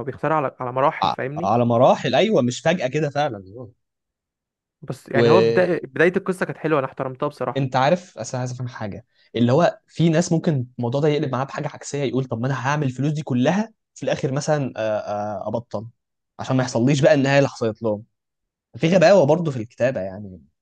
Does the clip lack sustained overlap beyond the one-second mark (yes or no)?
yes